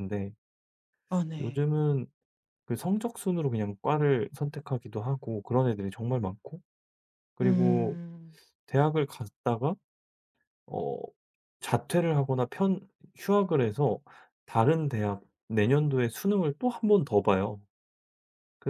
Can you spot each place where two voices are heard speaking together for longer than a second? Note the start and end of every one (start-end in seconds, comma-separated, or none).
none